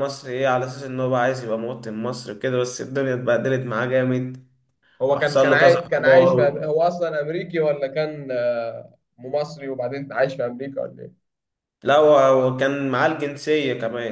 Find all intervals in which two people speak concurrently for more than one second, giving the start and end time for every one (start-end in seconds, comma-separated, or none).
5.1-6.5